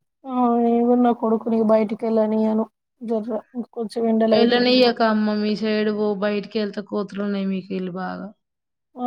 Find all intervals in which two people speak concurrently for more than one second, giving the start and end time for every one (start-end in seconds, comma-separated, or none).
none